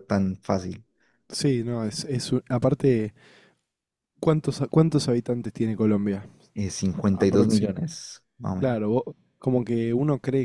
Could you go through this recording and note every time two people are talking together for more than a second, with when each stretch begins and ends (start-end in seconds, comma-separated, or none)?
none